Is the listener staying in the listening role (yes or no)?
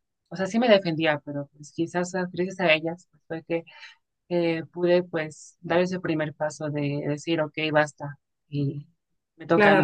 no